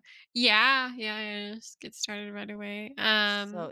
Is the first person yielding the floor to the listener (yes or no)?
yes